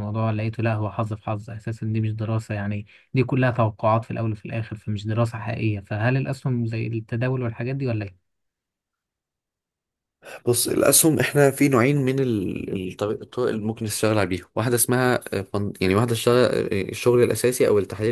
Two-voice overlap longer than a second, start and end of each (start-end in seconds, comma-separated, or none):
none